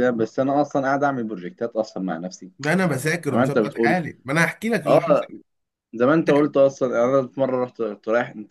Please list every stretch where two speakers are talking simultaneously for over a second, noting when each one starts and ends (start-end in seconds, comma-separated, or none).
2.6-4.0